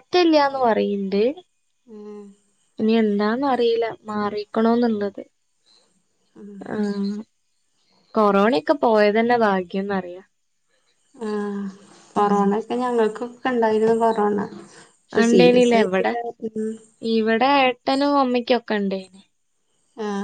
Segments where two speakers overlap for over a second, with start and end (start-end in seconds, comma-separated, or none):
none